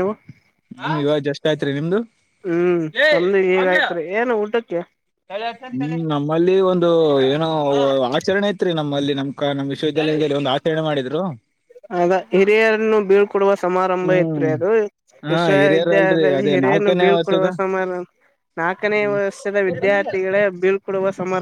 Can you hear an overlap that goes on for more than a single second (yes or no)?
yes